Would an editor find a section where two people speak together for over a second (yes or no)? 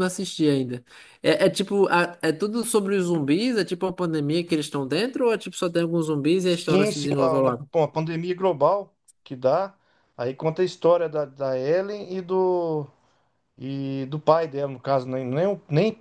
yes